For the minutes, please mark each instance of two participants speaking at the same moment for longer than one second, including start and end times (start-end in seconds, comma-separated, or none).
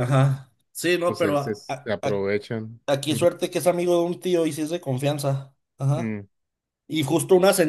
1.1-2.3